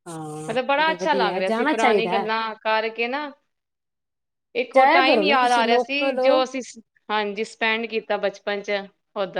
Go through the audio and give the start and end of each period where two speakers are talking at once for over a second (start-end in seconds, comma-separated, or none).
0.5-2.3, 4.7-6.3